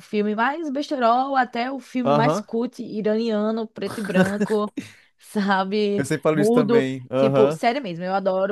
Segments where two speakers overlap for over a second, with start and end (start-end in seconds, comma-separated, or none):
6.0-7.6